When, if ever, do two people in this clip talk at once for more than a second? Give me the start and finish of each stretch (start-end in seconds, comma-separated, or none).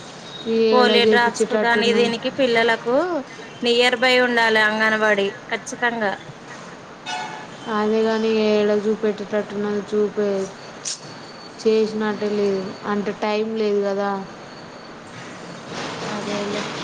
0.7-2.1